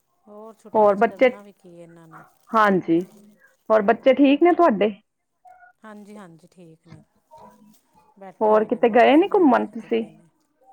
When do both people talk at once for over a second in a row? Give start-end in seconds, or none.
8.4-10.0